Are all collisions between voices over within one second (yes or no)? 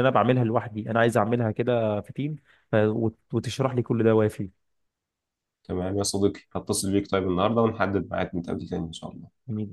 yes